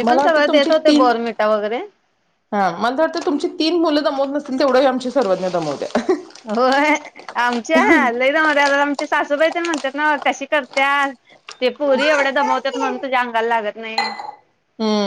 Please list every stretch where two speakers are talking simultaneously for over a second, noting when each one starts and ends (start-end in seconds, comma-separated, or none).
none